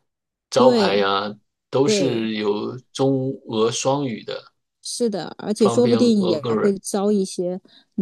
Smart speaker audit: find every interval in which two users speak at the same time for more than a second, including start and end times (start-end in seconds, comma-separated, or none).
5.6-6.8